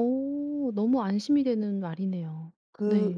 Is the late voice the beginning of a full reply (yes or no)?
yes